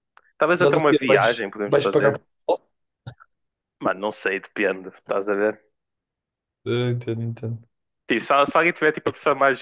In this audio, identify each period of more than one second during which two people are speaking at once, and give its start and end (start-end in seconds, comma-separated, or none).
0.6-2.2